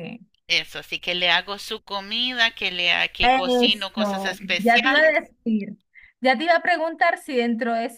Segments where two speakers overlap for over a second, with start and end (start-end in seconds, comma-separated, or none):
3.2-5.2